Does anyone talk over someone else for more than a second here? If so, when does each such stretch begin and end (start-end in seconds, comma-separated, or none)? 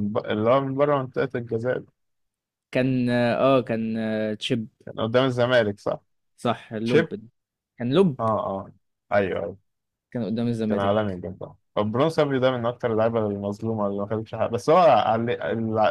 none